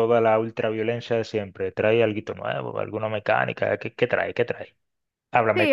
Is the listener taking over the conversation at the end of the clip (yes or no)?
yes